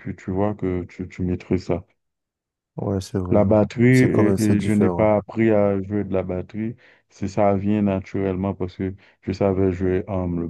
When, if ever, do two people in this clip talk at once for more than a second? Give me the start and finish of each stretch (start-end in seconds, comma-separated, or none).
3.3-5.1